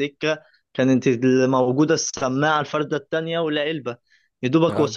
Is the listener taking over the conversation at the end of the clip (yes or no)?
no